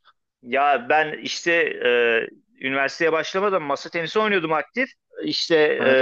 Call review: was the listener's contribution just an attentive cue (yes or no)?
yes